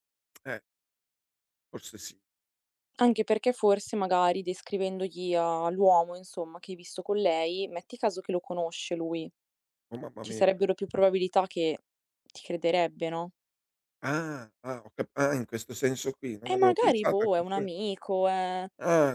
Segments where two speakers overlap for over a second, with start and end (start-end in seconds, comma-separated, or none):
16.5-17.7